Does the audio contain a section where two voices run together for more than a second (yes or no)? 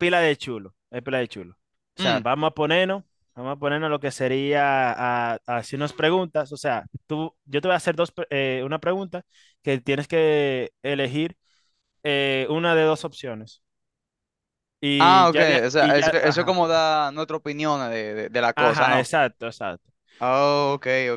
yes